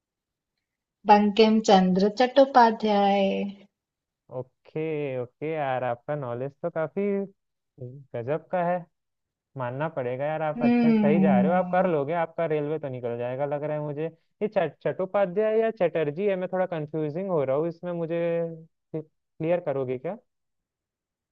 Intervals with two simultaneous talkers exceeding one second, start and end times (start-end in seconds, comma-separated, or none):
10.6-11.9